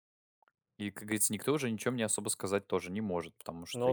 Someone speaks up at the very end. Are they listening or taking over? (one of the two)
listening